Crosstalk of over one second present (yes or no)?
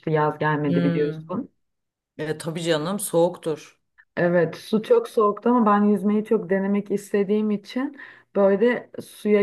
no